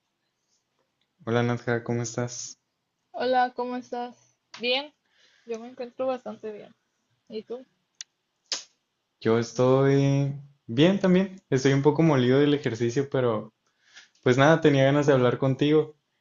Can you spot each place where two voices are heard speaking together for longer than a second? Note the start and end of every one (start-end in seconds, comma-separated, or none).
none